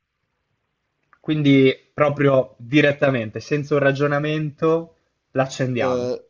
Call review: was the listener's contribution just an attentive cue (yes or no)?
no